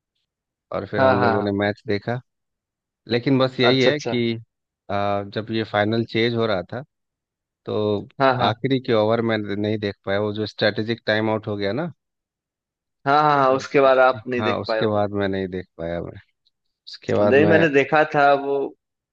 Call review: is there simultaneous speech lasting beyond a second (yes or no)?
yes